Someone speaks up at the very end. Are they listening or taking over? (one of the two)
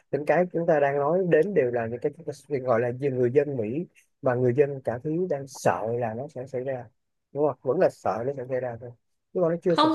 taking over